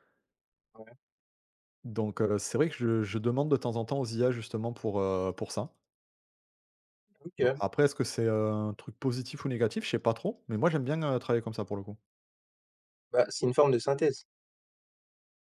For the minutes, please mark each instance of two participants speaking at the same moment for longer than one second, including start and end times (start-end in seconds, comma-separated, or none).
none